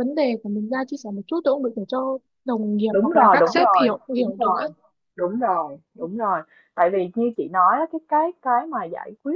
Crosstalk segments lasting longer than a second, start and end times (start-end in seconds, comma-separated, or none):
2.9-4.7